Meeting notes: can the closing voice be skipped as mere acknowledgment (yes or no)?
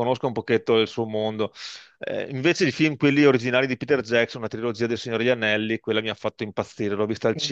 yes